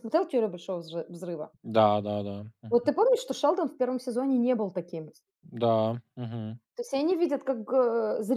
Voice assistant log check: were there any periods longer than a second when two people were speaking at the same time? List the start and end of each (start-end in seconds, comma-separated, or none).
none